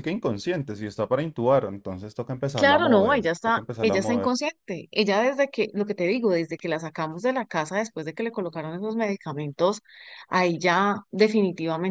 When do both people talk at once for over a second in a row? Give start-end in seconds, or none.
2.5-4.4